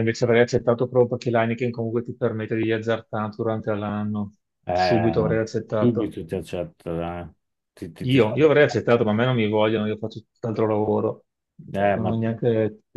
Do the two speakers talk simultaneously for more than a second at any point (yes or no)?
yes